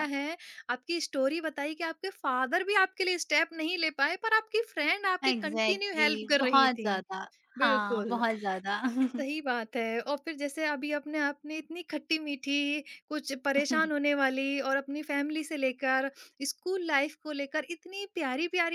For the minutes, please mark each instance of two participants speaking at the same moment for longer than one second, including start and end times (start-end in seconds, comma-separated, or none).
5.3-6.9